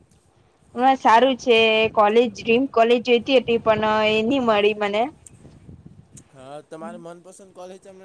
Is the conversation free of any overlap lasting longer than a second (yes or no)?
yes